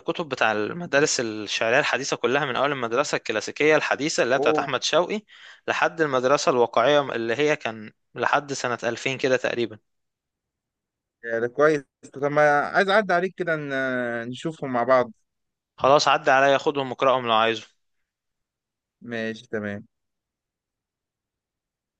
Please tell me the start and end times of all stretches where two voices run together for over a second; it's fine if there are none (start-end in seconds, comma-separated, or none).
none